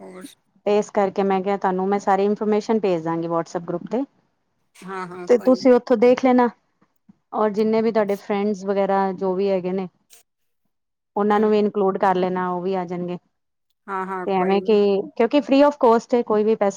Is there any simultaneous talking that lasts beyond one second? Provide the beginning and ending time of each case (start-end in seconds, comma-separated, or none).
none